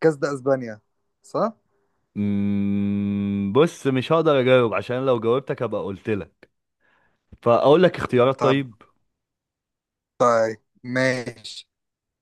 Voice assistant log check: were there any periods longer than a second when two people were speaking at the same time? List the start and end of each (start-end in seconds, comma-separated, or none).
none